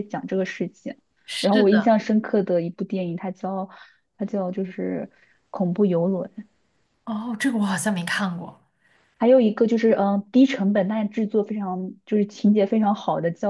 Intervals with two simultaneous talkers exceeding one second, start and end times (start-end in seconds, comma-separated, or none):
none